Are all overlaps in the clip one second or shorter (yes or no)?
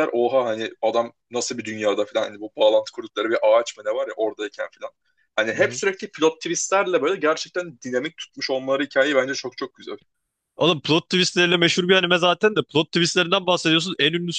yes